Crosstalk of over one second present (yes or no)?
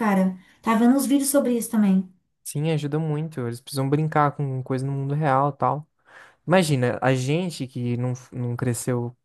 no